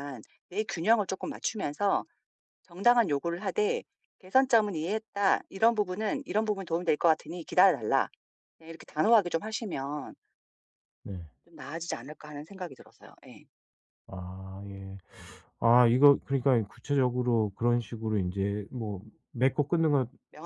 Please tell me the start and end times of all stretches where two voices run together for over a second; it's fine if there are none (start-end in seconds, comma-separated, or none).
none